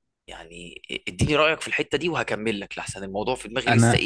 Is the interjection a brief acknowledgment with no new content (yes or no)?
no